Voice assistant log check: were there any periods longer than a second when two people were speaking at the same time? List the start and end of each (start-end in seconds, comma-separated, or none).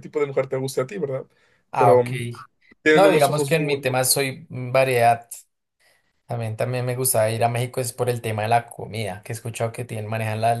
2.9-4.2